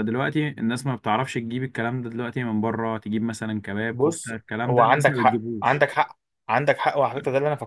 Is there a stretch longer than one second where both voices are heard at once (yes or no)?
yes